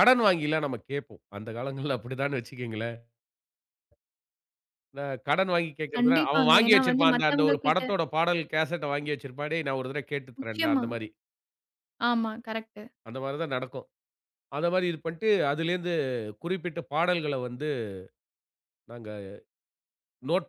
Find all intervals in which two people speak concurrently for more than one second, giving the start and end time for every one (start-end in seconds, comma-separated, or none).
6.0-7.8